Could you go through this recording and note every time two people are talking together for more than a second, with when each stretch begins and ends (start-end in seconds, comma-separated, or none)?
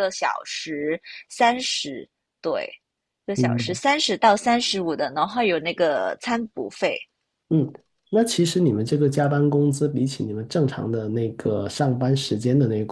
none